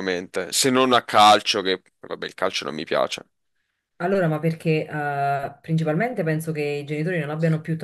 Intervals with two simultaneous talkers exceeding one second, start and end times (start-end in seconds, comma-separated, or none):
none